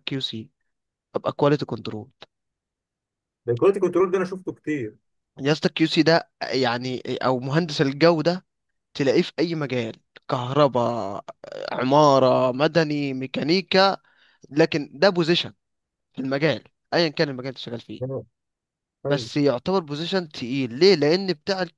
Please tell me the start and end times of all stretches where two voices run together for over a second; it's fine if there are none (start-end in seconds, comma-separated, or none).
none